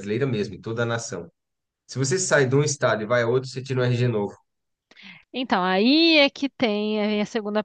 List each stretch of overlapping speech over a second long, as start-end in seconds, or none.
none